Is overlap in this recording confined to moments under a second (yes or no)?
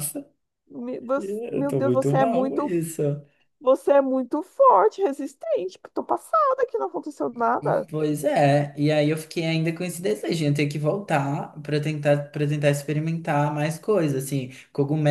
no